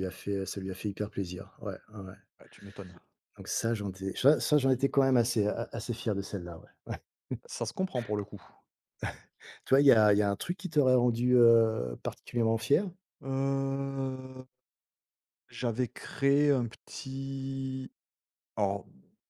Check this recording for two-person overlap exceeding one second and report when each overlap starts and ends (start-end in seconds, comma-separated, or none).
none